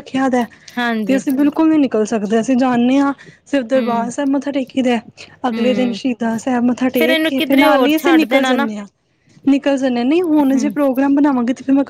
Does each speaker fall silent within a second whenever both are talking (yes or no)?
no